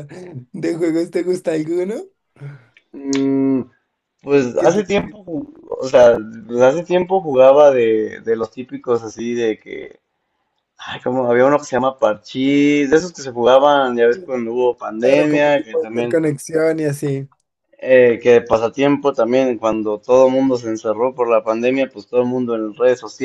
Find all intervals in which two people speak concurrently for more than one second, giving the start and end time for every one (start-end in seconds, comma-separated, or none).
15.0-16.2